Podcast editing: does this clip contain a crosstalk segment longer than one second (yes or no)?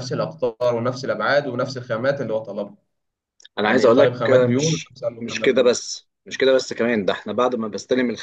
yes